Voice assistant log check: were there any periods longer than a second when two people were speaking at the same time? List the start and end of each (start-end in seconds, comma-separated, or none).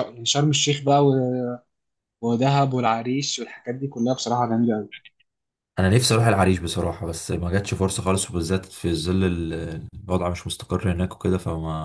none